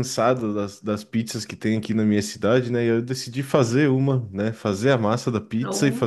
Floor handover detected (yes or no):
no